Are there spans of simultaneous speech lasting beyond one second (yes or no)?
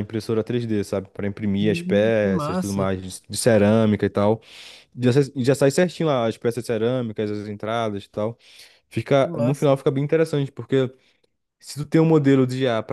yes